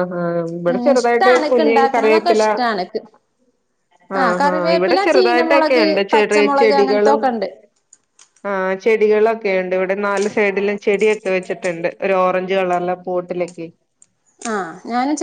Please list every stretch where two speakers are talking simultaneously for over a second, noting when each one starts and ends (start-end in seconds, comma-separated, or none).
0.7-2.4, 4.2-7.2